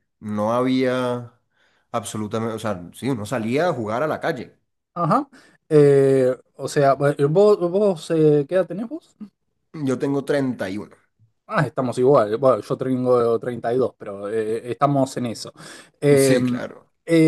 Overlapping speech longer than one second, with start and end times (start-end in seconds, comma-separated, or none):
none